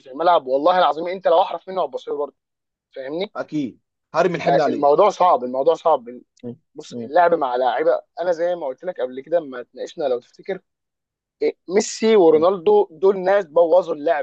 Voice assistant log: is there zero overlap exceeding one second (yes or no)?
yes